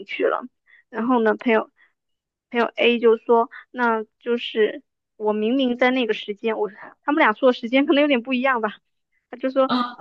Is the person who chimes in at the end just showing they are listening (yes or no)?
yes